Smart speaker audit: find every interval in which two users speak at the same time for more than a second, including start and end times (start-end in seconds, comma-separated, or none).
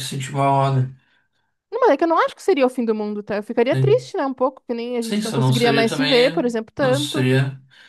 5.0-7.3